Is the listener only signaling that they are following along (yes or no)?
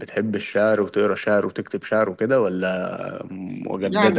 no